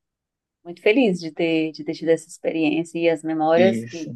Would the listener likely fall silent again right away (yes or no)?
yes